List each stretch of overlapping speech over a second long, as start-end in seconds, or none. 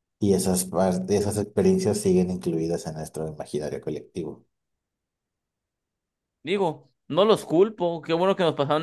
none